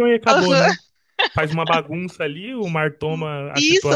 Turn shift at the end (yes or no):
yes